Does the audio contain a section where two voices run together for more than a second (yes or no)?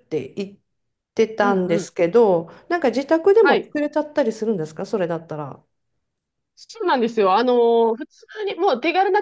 no